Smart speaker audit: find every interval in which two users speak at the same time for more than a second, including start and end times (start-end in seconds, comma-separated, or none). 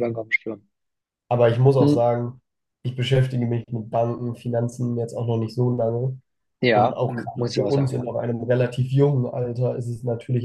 6.7-8.1